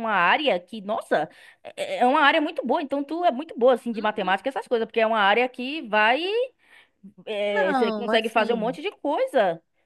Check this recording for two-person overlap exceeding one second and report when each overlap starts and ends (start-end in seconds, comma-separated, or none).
7.5-8.8